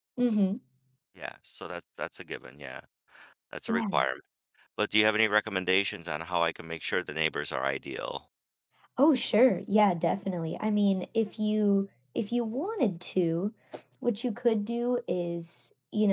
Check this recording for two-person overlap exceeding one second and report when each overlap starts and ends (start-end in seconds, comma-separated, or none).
none